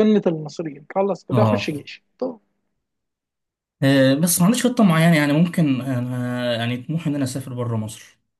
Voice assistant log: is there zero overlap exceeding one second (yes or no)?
yes